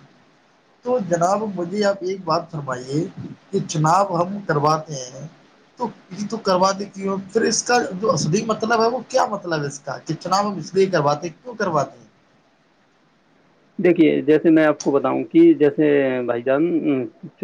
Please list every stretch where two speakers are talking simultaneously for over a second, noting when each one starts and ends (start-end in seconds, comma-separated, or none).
none